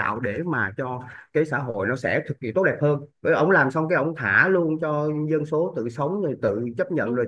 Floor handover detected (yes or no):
no